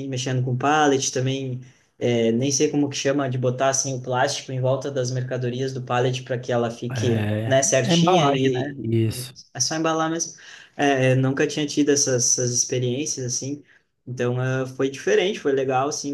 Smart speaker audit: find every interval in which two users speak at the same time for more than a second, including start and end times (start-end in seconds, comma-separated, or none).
6.9-9.3